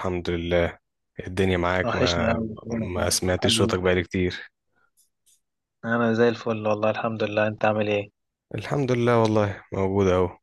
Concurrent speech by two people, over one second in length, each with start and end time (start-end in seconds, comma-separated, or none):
1.8-3.8